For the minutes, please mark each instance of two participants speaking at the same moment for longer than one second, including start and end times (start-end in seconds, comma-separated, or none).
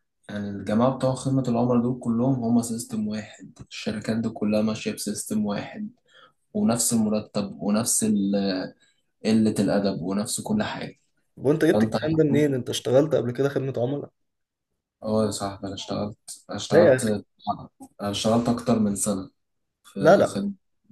none